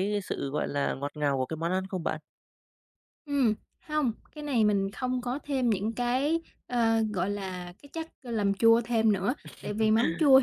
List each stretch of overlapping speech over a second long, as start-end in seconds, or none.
none